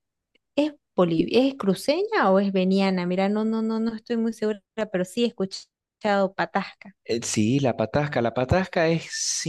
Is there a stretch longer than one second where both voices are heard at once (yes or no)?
no